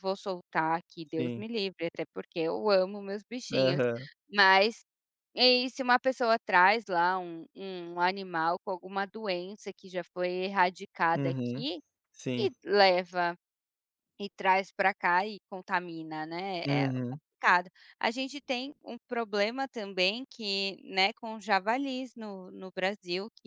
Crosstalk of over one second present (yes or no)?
no